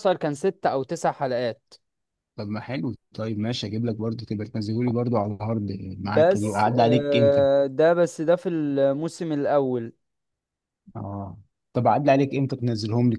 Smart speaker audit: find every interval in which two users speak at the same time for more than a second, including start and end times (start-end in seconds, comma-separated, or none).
5.9-7.5